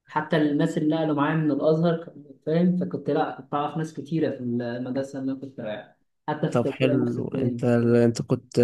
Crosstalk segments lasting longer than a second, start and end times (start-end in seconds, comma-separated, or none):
6.5-7.7